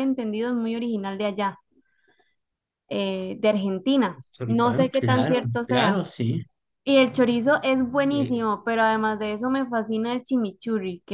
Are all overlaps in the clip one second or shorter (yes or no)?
no